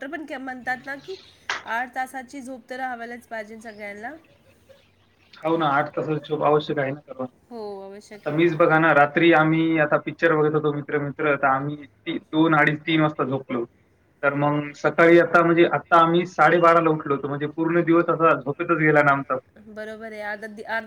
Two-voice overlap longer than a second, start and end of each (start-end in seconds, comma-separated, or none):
none